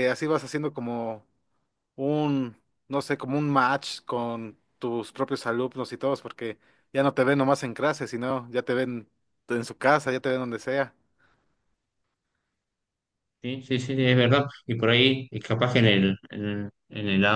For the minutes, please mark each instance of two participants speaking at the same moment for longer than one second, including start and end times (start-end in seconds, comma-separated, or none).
none